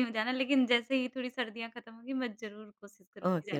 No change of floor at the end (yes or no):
no